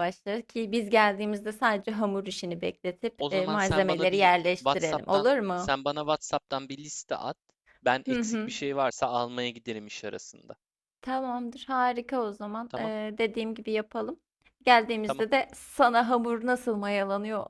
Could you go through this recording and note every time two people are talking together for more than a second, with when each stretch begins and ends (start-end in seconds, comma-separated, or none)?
3.2-5.7